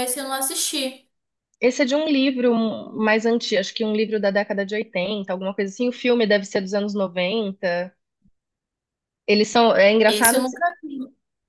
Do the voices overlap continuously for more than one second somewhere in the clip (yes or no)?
no